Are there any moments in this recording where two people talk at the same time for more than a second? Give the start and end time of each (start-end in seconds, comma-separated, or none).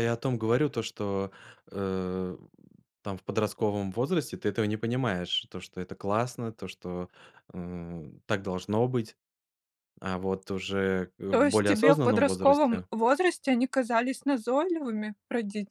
11.3-12.9